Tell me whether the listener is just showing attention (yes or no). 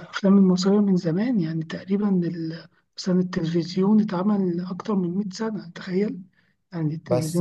no